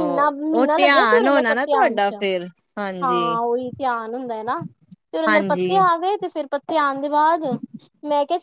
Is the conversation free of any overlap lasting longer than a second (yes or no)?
no